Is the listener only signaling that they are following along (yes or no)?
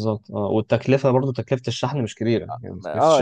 no